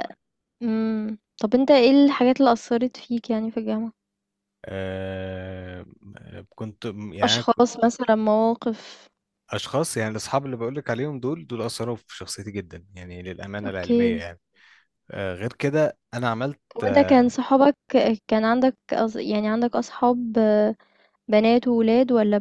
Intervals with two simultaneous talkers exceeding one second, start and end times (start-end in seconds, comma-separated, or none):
none